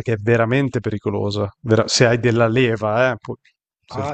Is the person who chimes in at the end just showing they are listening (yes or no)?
yes